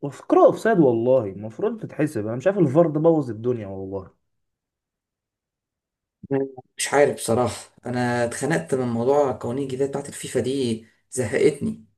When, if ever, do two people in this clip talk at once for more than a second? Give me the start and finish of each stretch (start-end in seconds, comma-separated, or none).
none